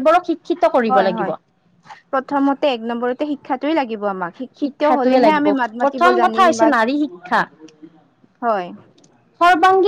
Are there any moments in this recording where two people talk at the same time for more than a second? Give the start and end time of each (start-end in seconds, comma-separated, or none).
4.6-6.7